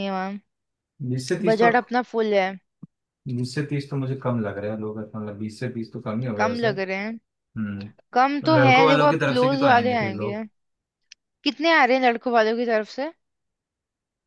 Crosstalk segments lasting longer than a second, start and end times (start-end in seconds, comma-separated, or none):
8.6-10.4